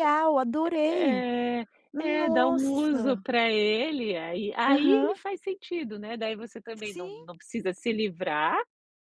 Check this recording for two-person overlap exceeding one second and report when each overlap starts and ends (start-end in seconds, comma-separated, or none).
1.9-3.2